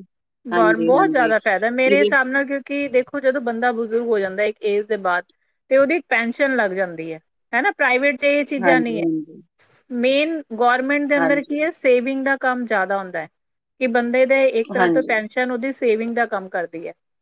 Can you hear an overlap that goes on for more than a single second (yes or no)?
yes